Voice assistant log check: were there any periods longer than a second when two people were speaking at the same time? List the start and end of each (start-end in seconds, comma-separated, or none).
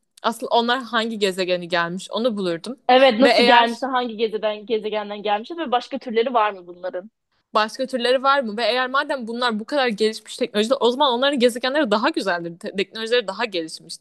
none